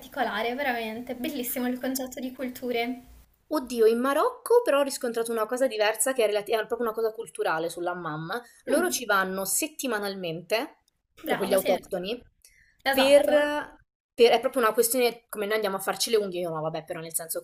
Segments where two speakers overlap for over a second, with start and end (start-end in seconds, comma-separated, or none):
none